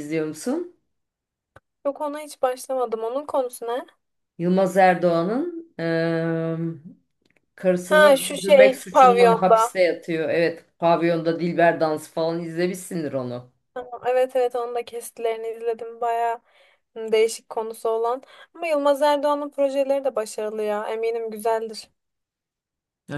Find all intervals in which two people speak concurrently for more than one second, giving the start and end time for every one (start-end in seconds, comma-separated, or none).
7.8-9.7